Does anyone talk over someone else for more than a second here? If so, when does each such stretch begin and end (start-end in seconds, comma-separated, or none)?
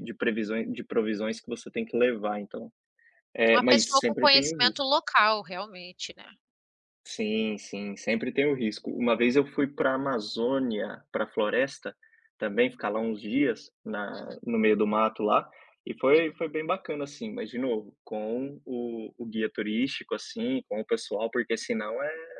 3.5-4.8